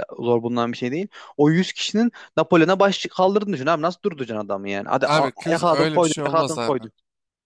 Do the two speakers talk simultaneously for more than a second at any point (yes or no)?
yes